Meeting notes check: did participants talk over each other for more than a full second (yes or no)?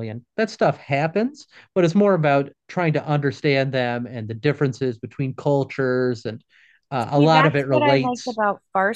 yes